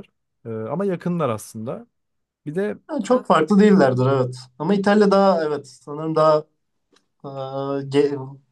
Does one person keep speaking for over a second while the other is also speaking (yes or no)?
no